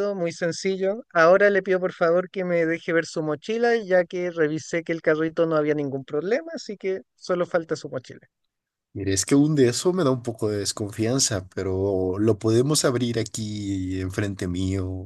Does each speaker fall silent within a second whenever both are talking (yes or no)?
yes